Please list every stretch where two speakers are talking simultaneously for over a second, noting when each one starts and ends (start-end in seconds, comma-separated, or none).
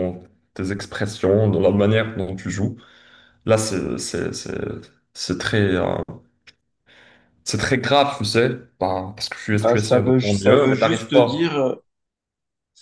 9.5-11.5